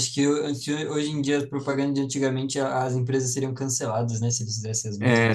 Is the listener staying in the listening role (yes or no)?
no